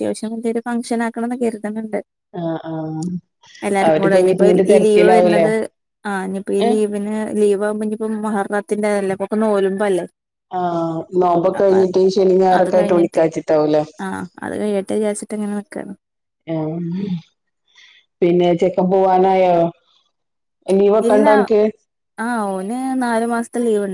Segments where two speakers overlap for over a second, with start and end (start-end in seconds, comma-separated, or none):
3.9-5.5